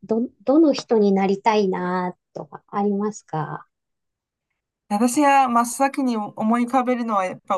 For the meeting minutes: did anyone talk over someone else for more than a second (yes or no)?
no